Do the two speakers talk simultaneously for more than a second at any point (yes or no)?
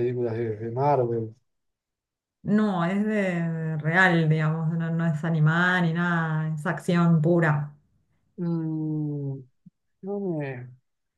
no